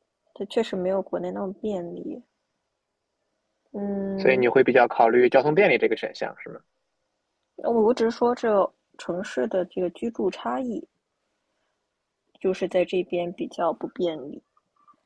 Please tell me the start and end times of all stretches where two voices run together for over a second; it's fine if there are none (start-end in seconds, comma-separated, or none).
none